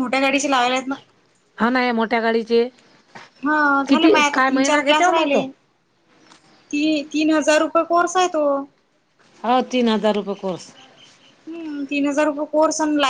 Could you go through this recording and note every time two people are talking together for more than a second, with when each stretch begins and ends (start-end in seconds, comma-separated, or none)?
3.9-5.4